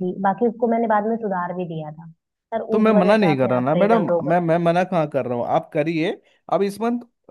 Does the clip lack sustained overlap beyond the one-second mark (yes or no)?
no